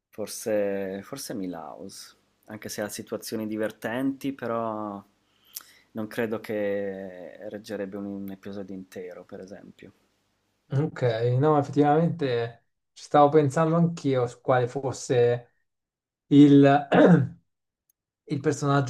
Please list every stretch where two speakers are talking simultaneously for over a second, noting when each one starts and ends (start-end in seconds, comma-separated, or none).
none